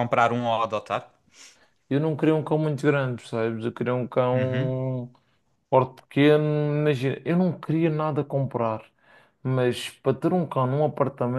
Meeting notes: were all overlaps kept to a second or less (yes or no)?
yes